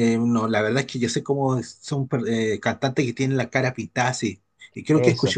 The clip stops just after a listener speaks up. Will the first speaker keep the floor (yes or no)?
yes